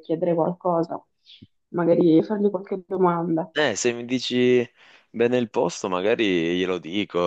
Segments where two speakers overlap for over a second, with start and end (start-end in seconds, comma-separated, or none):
none